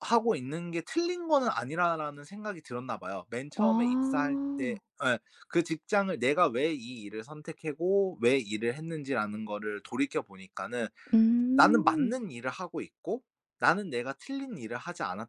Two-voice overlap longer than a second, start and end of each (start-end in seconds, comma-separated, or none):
3.6-4.8